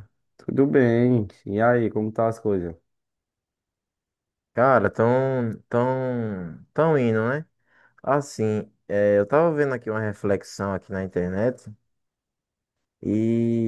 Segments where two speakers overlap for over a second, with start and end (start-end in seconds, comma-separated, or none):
none